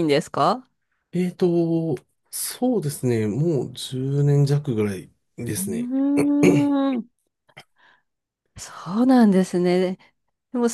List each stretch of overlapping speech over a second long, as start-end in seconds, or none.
none